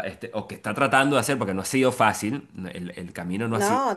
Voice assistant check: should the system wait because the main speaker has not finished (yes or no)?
yes